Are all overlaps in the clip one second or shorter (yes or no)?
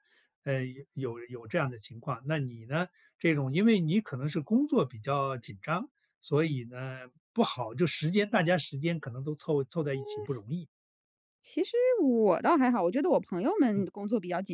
yes